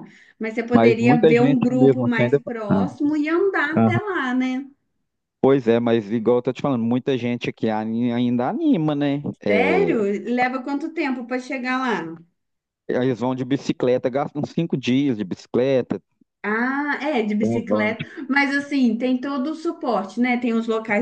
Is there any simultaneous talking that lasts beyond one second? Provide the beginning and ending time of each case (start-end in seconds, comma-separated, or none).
0.7-2.8